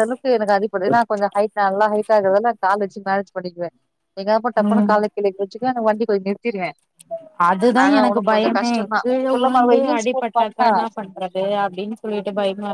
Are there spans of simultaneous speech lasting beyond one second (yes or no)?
yes